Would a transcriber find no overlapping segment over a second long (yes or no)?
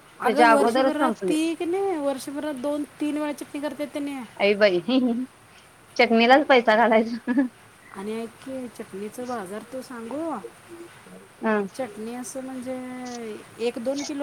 yes